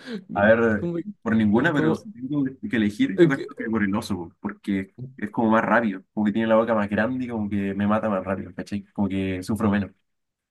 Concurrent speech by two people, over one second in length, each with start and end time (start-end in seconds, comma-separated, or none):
0.8-2.1